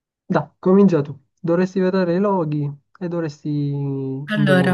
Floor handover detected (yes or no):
no